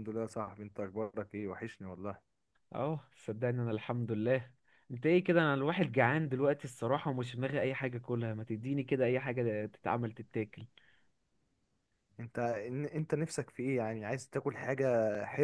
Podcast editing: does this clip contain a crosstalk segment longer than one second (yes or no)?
no